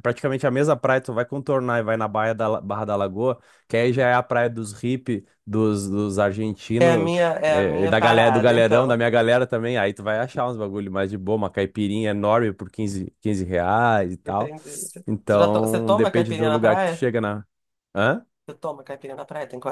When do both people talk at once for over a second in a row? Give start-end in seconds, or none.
6.8-9.0, 15.3-17.0